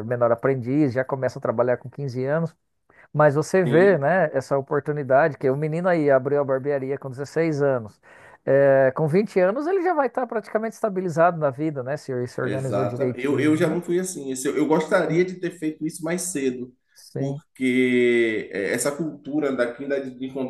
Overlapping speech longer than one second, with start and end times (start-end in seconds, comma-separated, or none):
12.4-13.8